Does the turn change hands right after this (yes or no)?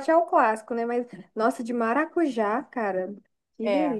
yes